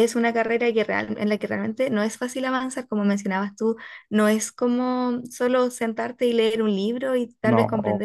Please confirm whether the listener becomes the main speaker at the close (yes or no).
no